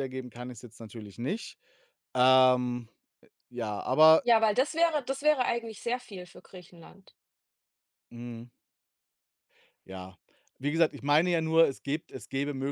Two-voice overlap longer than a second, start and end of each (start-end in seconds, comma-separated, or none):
none